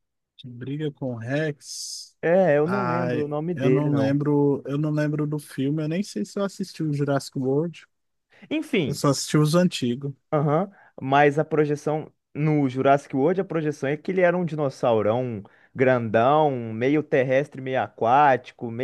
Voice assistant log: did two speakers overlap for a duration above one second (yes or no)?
yes